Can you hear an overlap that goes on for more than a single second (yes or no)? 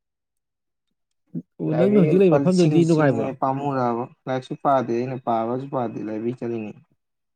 yes